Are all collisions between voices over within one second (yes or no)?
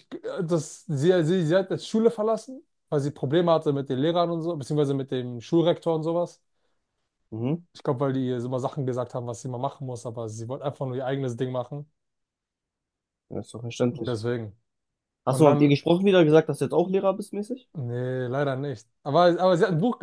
yes